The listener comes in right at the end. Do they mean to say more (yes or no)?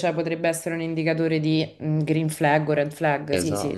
yes